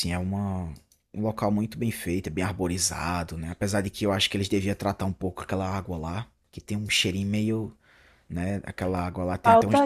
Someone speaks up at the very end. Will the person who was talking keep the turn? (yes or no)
yes